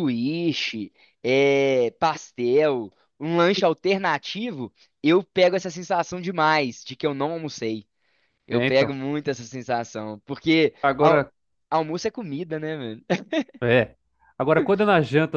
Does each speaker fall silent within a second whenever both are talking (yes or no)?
yes